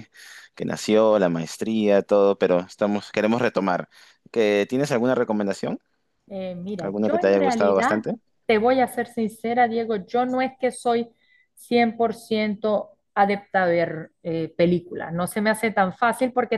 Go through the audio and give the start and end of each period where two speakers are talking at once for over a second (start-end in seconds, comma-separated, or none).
6.8-8.0